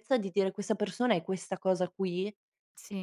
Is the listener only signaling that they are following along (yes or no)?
no